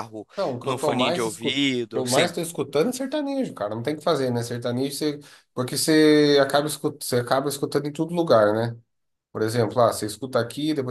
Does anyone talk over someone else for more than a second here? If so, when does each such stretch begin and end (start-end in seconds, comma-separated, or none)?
0.6-2.3